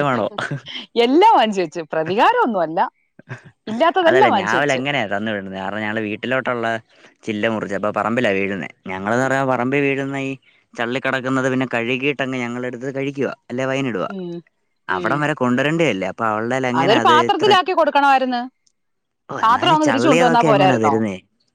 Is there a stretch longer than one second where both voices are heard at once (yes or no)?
yes